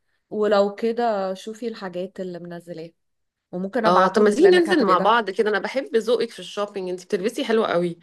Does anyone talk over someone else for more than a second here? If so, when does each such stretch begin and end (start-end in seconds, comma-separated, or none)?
3.9-5.2